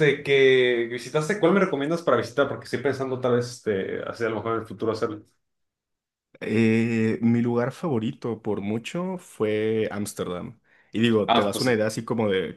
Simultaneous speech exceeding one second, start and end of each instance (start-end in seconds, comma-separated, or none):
none